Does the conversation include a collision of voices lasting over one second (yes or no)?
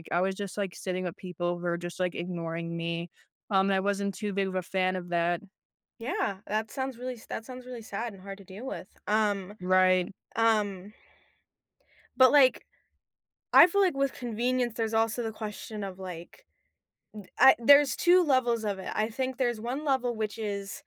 no